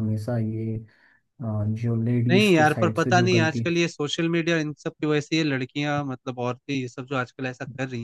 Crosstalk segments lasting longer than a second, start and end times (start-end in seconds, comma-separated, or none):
2.3-3.6